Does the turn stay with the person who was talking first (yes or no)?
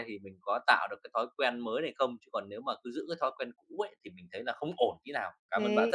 no